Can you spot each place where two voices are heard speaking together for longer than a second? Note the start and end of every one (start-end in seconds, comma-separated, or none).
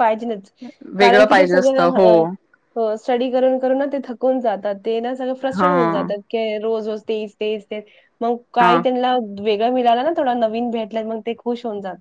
1.0-2.2